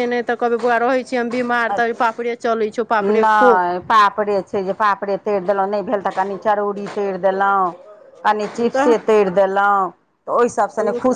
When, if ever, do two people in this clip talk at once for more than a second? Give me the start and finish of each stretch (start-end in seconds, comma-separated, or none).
none